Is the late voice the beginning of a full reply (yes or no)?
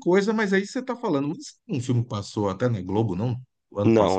yes